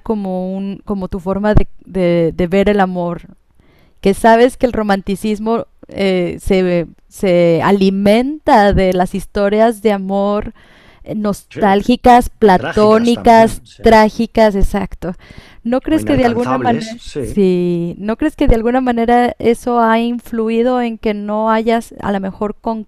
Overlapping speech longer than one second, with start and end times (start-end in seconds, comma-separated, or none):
12.4-13.8, 15.9-17.4